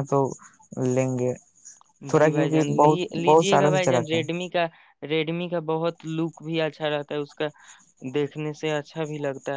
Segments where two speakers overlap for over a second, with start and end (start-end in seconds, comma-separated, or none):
2.1-4.2